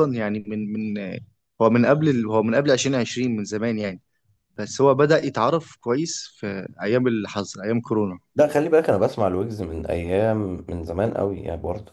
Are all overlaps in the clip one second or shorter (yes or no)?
yes